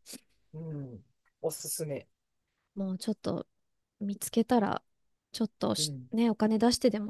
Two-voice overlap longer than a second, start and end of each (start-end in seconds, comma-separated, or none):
none